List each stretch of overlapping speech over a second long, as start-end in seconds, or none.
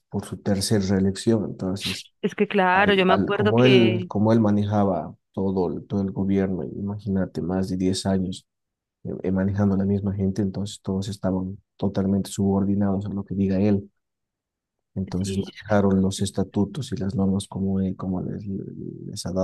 2.7-4.1